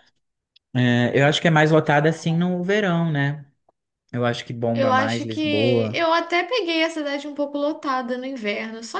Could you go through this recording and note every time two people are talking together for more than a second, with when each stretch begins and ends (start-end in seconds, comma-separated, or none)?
4.7-6.0